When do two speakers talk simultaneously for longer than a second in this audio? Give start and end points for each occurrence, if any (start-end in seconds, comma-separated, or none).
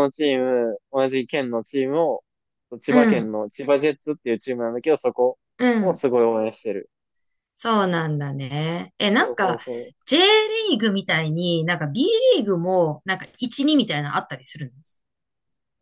none